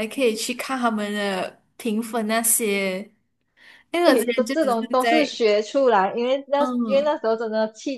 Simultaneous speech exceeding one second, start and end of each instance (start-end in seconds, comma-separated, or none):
4.0-5.4